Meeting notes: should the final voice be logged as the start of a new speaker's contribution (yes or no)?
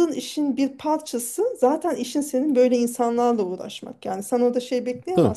no